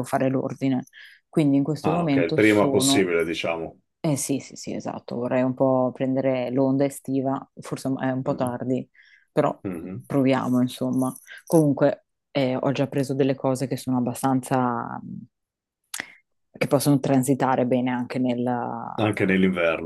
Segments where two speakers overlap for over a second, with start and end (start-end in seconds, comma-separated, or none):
1.8-3.1